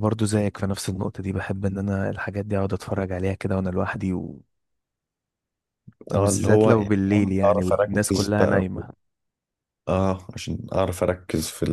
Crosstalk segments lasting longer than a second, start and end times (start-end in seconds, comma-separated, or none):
6.1-8.8